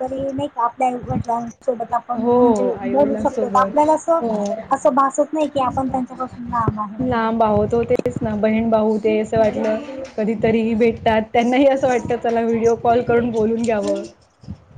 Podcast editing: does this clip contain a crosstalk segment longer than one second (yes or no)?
yes